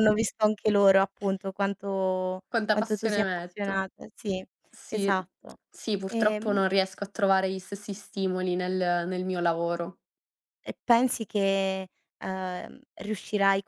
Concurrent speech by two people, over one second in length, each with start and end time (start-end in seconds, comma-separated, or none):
2.5-3.8